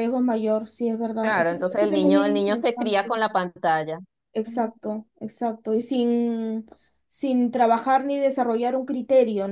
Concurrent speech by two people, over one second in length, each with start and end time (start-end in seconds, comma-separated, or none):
1.2-3.1